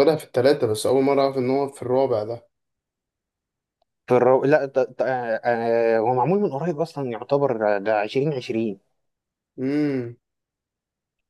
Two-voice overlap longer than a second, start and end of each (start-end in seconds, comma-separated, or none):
none